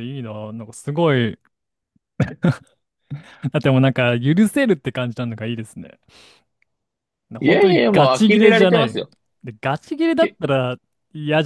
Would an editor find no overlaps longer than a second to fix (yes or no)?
no